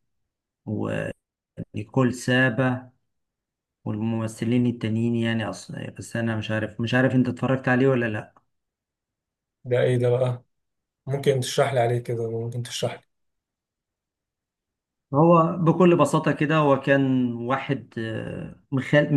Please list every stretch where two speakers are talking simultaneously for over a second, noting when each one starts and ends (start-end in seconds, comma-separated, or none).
none